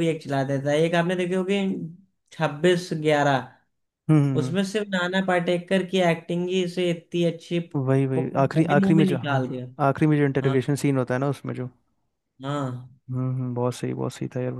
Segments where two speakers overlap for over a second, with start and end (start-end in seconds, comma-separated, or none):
7.8-9.4